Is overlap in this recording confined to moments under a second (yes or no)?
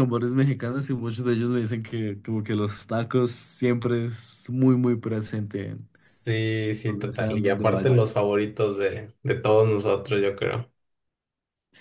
no